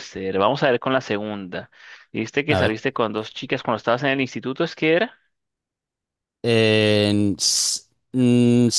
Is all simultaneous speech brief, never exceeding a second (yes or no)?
yes